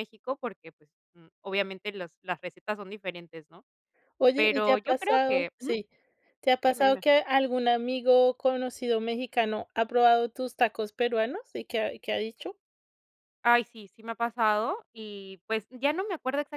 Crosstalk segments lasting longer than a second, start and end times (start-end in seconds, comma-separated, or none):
4.3-5.7